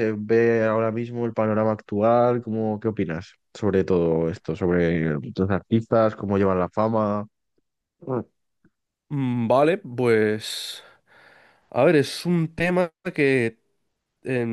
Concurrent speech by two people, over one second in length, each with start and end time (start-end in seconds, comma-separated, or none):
none